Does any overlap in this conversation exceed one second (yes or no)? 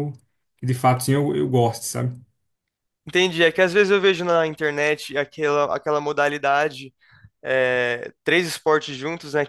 no